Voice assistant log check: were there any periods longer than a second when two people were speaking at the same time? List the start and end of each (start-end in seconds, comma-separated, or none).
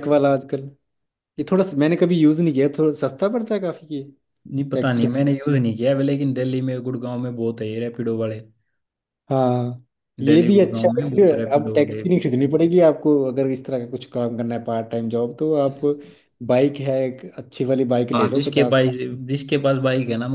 10.3-12.0